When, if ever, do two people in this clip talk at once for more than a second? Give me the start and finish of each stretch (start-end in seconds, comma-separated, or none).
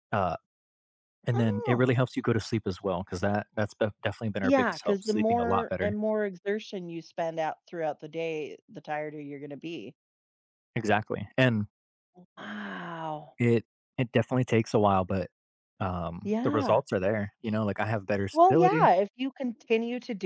4.4-6.0